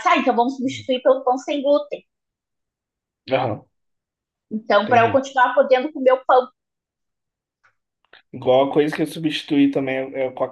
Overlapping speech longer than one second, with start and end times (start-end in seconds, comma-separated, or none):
none